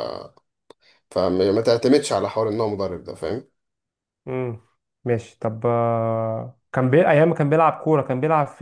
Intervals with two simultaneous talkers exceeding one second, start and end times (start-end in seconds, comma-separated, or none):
none